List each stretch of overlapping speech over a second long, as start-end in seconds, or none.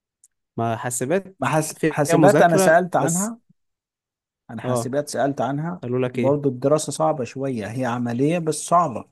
1.4-3.4